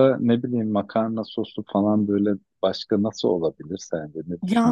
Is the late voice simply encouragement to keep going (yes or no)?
no